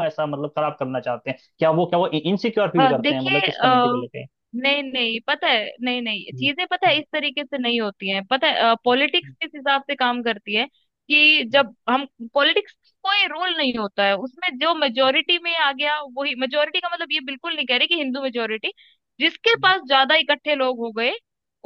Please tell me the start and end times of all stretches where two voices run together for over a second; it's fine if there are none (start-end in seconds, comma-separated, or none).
2.8-4.0